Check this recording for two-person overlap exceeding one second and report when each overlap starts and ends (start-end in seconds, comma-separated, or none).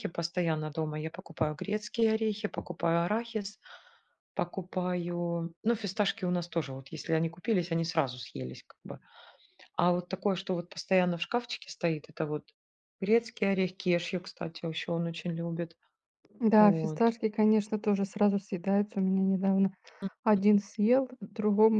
none